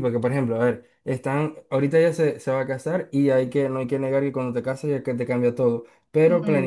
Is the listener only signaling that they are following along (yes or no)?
yes